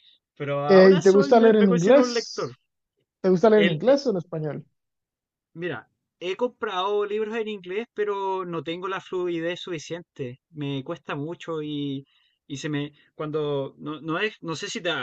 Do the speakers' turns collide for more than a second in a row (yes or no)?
yes